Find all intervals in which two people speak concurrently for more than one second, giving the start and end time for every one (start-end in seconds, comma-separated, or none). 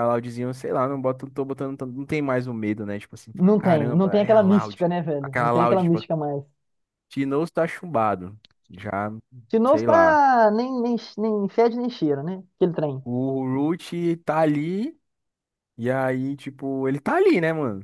3.3-6.0